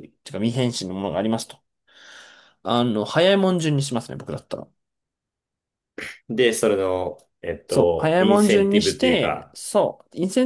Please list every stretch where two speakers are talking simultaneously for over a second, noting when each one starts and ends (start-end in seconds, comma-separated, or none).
7.7-9.6